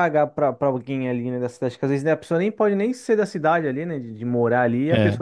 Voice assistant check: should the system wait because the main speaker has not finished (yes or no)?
yes